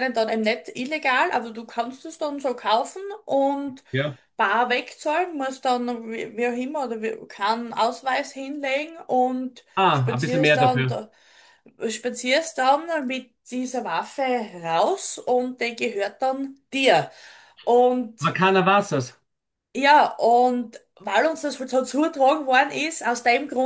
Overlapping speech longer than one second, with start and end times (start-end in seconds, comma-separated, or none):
9.8-11.0